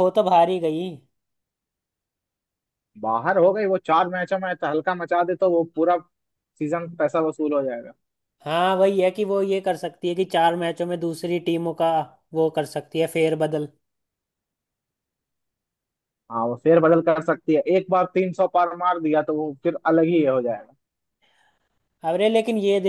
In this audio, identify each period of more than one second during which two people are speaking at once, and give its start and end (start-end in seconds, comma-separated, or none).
none